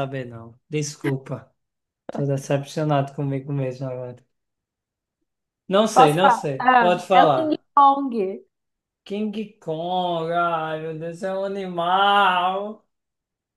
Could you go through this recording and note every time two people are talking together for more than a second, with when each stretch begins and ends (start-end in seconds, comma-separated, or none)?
5.9-7.6